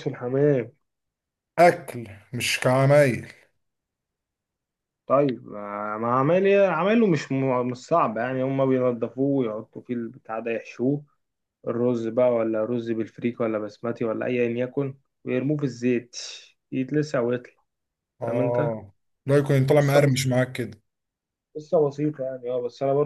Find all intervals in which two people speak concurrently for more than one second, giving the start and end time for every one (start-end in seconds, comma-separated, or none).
none